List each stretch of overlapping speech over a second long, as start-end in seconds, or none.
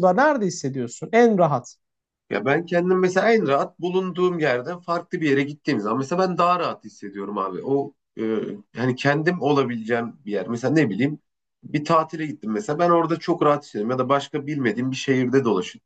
none